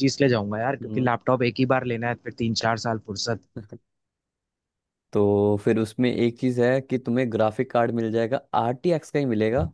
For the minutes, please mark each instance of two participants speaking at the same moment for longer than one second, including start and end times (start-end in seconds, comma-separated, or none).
none